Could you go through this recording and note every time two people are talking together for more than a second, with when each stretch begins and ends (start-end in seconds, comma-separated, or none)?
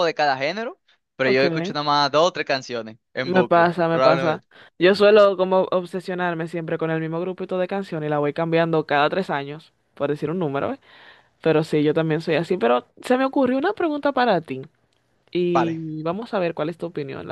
3.2-4.5